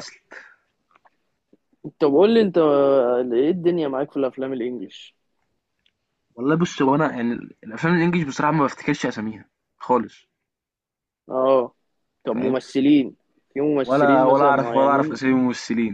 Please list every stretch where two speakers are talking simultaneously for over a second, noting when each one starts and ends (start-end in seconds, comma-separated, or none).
13.8-15.2